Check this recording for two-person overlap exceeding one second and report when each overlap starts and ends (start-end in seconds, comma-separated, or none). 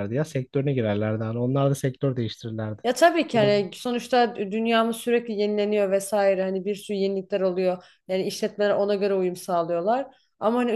none